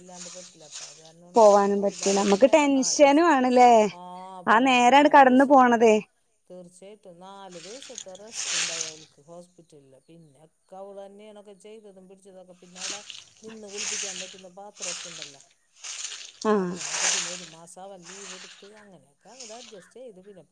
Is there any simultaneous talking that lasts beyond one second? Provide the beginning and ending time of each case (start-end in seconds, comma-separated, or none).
1.4-3.3